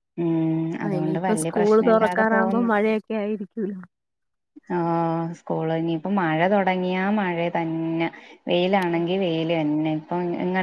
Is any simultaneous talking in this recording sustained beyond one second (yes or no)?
yes